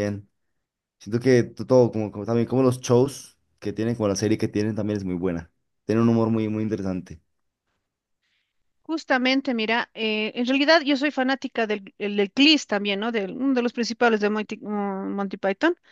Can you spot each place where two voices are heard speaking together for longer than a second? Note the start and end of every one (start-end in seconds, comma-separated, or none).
none